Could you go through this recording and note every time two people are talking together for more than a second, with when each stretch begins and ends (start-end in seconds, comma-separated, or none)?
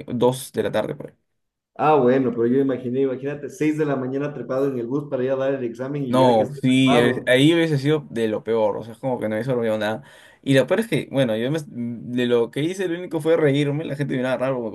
6.1-7.3